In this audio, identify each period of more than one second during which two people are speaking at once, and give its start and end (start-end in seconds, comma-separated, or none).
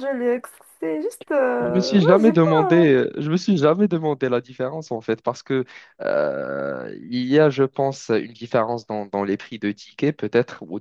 1.6-2.9